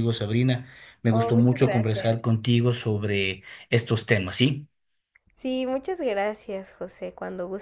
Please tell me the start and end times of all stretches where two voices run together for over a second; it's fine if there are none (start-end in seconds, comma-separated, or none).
1.1-2.3